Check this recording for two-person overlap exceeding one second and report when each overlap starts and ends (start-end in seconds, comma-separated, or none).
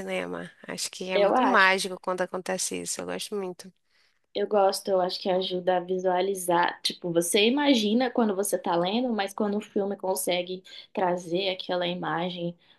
none